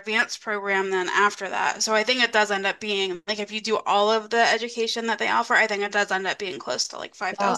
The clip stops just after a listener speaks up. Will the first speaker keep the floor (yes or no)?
no